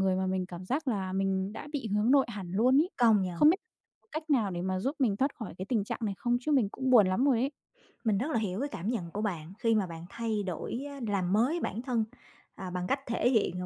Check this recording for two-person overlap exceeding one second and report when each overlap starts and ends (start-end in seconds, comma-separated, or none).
none